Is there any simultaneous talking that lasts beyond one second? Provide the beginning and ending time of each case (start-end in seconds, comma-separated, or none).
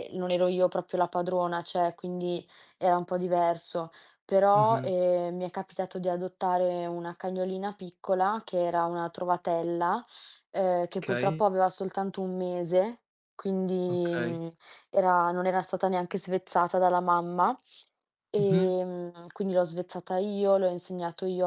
none